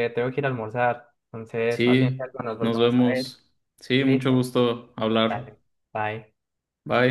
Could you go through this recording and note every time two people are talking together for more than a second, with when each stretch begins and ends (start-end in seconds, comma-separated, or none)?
1.7-3.3